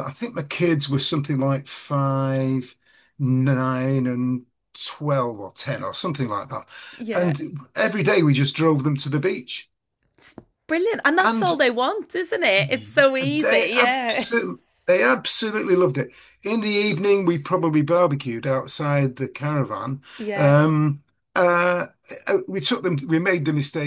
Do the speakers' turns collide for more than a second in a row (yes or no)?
yes